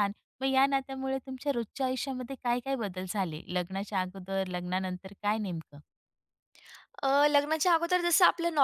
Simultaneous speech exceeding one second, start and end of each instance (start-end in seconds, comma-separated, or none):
none